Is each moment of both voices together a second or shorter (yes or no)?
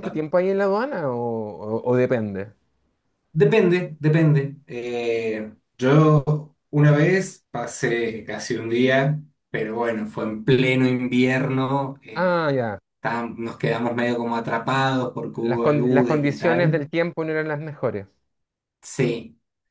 no